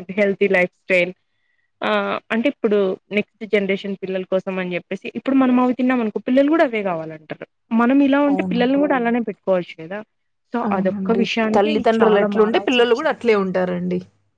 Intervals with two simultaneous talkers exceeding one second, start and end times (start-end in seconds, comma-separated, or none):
10.7-13.2